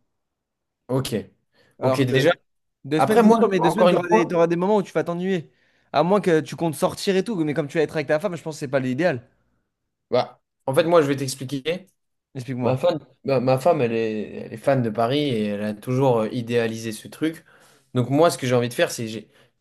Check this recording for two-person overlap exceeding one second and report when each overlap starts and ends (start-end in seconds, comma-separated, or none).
3.0-4.4